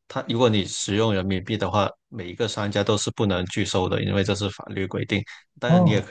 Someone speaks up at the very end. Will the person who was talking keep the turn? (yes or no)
yes